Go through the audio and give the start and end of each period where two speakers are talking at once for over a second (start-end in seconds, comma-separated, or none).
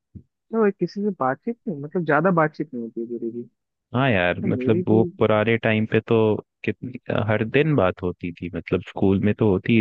none